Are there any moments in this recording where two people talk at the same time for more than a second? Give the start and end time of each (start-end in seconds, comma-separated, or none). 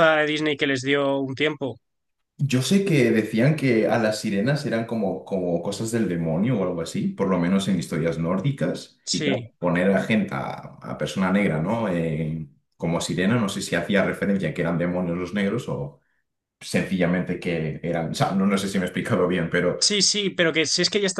none